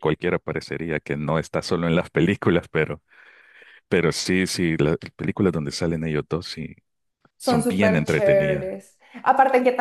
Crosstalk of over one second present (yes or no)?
yes